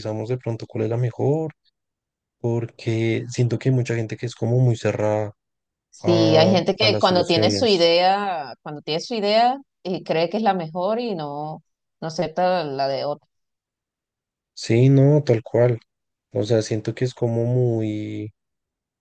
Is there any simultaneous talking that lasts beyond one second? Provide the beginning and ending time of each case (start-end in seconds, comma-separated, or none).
6.0-7.9